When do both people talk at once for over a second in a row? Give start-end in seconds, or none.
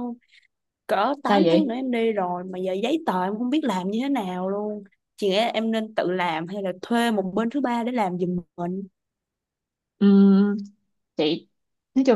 none